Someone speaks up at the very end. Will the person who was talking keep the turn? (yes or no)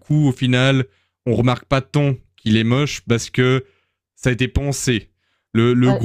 yes